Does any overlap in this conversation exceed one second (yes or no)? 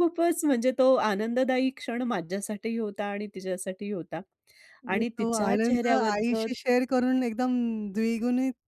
yes